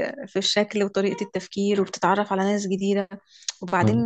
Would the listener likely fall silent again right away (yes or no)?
yes